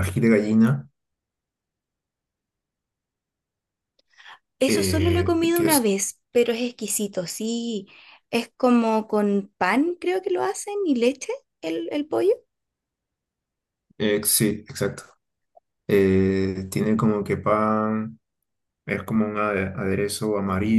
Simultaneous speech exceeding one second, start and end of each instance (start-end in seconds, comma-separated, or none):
4.7-5.9